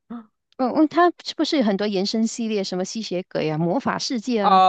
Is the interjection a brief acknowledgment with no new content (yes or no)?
no